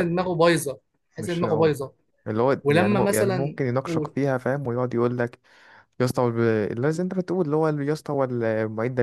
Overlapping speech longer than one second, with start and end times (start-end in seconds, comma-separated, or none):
2.6-4.1